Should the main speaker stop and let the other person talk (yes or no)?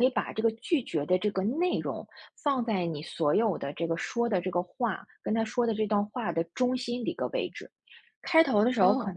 no